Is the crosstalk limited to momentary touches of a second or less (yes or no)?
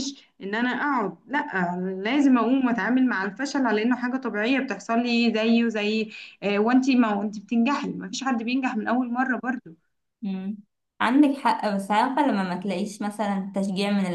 yes